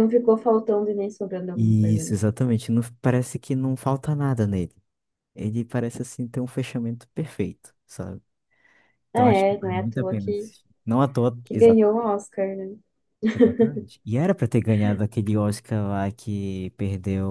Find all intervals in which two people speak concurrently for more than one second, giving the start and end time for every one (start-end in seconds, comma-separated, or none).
9.1-10.5